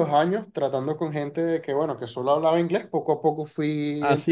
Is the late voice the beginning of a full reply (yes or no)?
yes